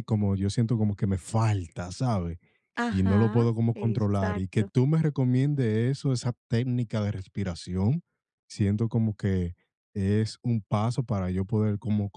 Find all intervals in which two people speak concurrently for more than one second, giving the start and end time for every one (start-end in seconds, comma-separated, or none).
2.9-4.7